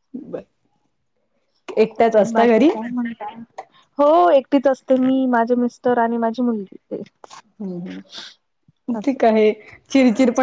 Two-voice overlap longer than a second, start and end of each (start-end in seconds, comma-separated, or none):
none